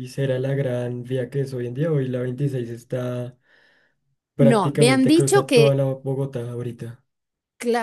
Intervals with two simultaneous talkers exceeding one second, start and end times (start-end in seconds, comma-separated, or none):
4.4-5.8